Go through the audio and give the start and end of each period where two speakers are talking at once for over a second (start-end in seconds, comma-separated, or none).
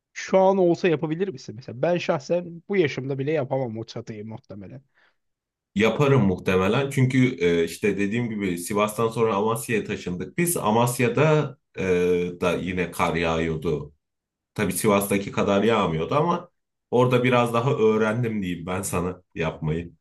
none